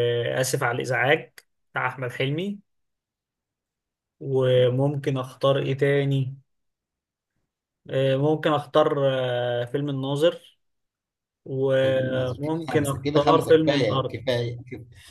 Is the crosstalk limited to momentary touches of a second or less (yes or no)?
no